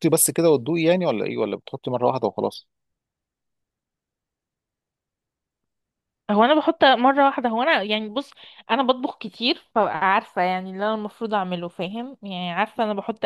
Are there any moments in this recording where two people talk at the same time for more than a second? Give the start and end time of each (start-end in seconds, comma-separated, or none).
none